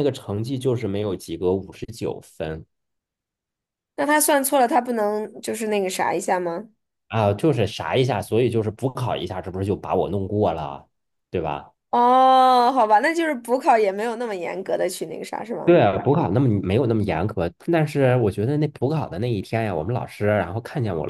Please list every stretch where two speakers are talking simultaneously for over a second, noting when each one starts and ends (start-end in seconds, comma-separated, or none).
none